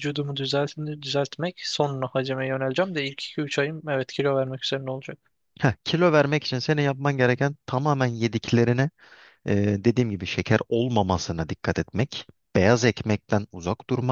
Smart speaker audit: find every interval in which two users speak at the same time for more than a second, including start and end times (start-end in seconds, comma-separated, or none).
none